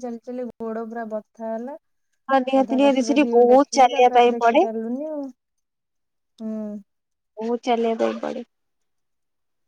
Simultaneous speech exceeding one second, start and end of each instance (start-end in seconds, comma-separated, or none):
2.6-4.6